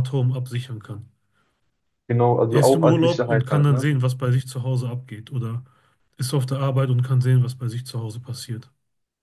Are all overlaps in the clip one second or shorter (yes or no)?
no